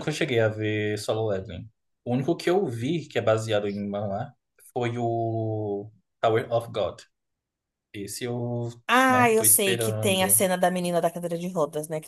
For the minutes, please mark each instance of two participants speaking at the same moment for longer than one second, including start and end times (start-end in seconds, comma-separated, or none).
9.1-10.4